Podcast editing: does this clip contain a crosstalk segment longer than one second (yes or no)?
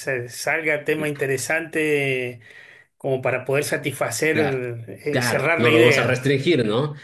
yes